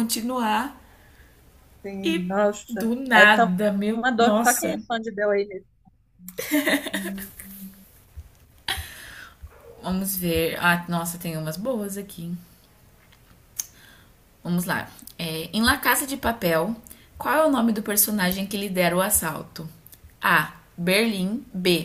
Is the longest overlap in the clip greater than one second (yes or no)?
yes